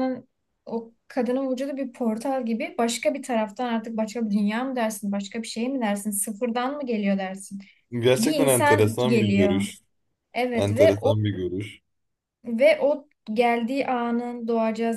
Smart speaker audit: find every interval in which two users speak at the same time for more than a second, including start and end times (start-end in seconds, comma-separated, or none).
8.2-9.7